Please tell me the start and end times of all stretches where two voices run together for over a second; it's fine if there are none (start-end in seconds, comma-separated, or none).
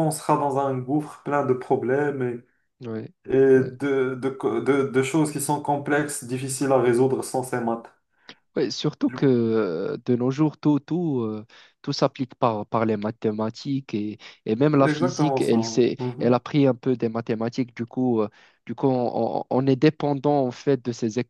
14.8-16.4